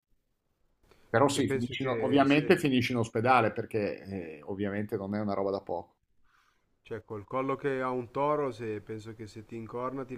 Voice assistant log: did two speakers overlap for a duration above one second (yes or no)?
yes